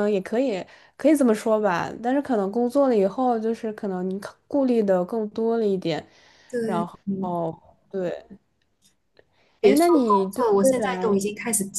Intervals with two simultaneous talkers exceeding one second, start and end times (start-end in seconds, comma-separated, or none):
9.6-11.2